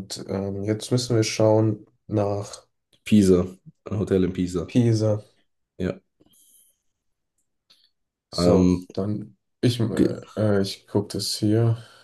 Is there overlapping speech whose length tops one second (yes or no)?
no